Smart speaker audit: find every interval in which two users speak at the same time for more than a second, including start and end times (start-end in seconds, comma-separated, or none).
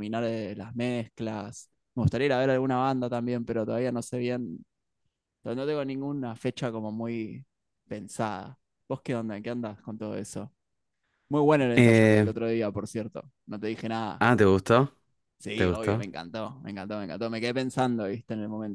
none